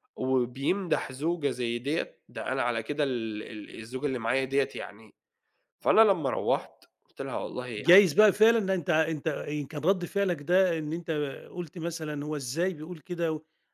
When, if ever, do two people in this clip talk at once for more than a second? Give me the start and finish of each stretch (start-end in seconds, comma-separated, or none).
none